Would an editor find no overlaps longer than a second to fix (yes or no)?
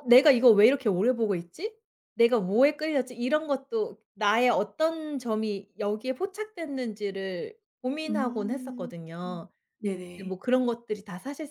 no